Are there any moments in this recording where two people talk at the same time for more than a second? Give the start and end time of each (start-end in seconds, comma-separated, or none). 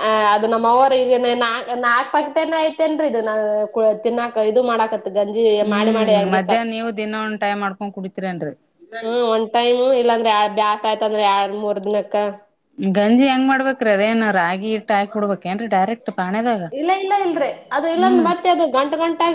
none